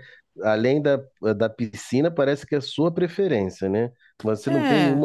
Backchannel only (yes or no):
yes